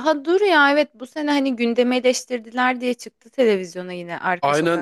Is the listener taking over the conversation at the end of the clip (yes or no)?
yes